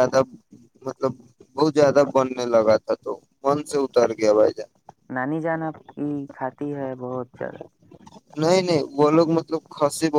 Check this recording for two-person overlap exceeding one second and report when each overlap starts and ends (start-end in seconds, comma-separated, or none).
none